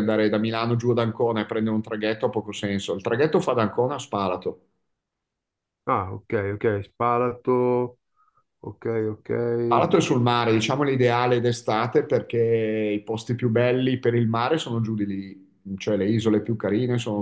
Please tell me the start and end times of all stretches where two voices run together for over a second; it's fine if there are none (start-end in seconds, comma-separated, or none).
none